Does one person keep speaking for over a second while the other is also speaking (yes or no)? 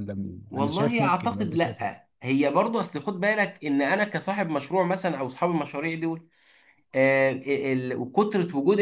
yes